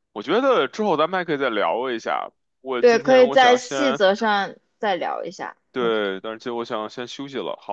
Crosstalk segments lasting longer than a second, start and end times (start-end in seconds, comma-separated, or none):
2.8-4.0